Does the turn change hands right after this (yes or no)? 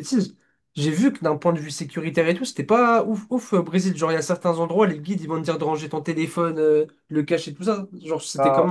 yes